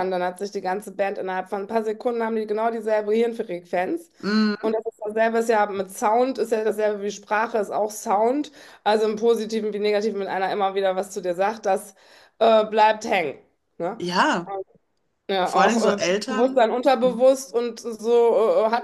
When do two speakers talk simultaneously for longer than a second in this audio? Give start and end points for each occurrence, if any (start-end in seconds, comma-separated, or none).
15.4-17.2